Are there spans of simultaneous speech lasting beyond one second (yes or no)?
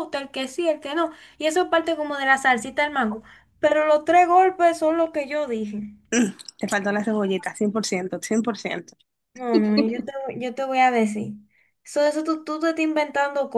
no